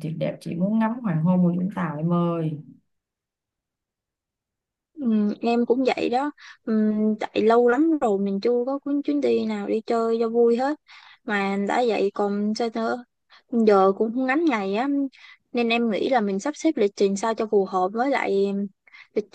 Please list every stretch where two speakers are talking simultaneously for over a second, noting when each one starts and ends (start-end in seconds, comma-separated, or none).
none